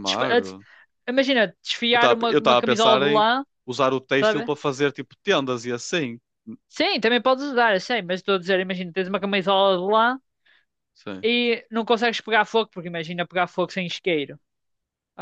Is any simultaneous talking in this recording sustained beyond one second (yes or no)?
yes